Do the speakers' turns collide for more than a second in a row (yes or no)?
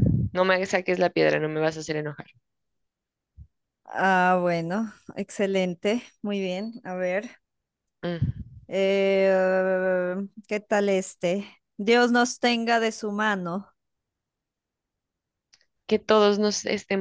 no